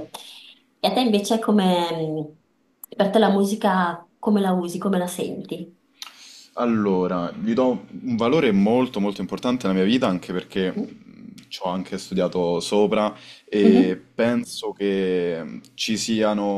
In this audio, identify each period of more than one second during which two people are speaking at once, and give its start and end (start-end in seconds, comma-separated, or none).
none